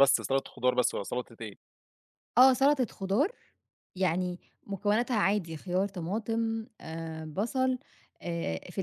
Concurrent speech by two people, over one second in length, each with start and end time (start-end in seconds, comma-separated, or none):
none